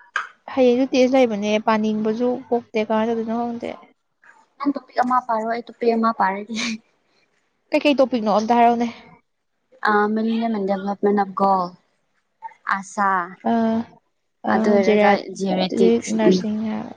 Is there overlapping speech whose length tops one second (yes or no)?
yes